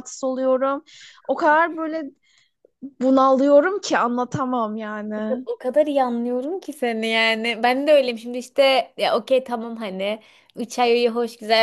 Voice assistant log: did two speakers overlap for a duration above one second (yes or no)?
no